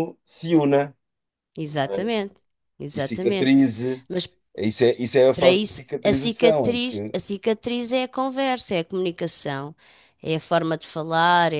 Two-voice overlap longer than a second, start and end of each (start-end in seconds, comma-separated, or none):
5.3-7.2